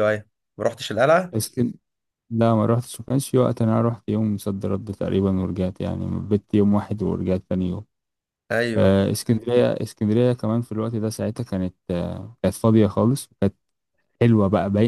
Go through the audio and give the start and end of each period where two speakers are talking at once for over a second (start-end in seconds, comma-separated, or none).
none